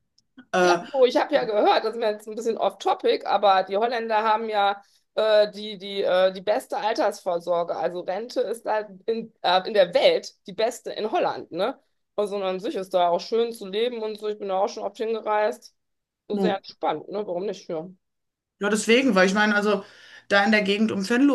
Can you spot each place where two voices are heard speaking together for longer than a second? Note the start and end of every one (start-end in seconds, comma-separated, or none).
none